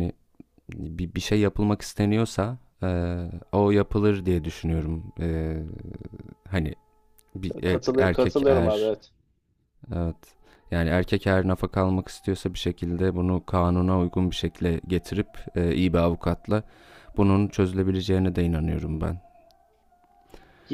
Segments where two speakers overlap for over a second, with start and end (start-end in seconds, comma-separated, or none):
7.7-8.9